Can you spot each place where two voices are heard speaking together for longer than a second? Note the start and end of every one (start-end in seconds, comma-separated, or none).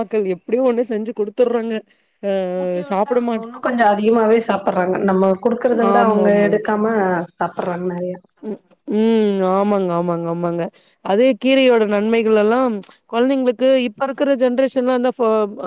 none